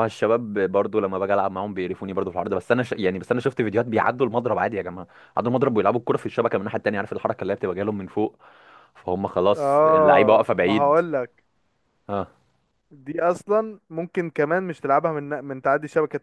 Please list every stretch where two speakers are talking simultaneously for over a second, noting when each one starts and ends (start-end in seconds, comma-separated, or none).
9.6-11.0